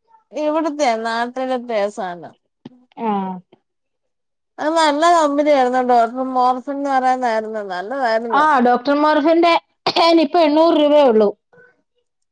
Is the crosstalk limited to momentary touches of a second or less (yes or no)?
yes